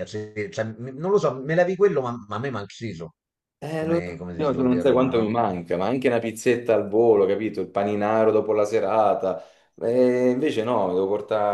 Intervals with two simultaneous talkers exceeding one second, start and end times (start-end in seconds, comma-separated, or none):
3.8-5.4